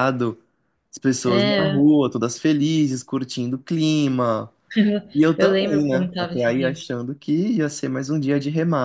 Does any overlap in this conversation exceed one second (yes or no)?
yes